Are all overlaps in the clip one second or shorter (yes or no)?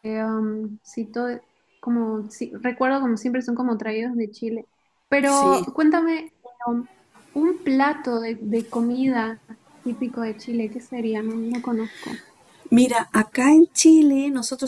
yes